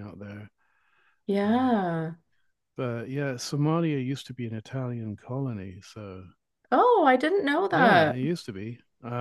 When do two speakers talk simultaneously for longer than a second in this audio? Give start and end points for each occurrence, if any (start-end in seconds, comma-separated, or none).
none